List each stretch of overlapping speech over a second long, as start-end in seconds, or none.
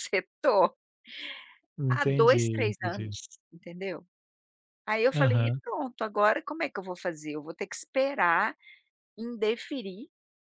1.9-3.1